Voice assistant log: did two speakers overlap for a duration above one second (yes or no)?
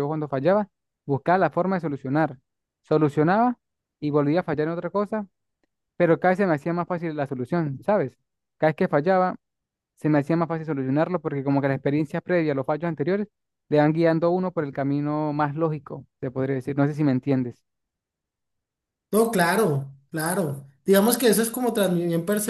no